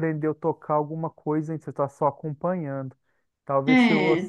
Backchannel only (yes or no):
yes